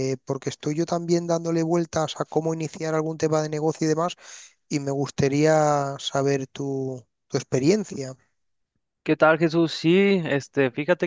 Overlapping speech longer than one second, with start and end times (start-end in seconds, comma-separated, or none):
none